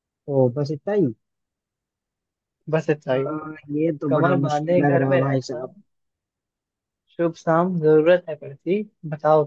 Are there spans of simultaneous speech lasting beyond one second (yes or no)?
yes